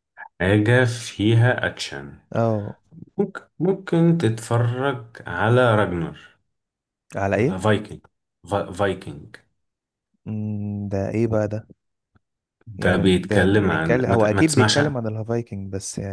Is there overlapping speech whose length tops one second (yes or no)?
yes